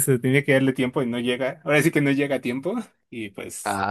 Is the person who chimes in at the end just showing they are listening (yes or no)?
no